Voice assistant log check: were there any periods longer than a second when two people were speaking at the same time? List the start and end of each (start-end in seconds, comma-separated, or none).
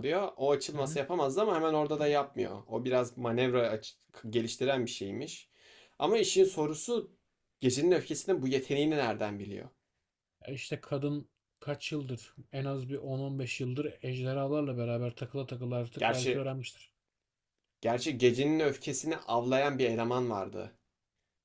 none